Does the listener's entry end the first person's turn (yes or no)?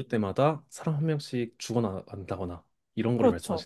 yes